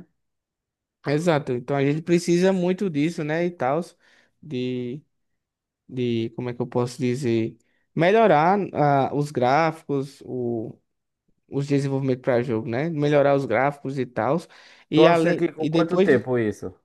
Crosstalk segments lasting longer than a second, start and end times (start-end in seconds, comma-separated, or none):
14.9-16.3